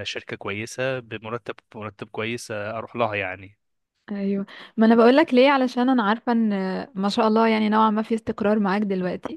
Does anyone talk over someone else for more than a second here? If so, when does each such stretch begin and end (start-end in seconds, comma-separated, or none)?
none